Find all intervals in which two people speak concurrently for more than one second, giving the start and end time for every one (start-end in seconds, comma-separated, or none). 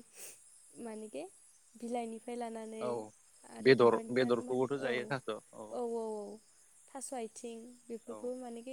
3.7-5.7